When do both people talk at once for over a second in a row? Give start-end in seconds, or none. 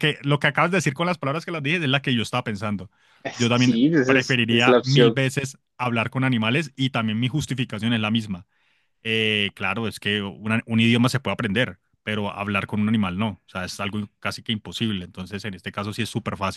3.3-5.2